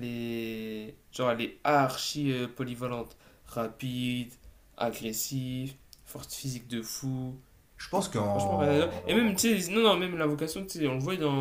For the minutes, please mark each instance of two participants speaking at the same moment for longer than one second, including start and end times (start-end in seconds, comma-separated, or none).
8.3-9.5